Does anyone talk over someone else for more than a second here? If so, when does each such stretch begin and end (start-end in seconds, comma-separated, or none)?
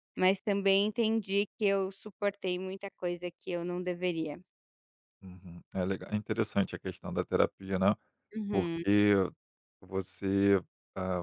none